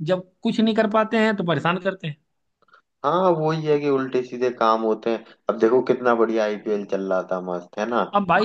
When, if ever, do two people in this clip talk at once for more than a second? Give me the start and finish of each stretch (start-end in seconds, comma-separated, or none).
none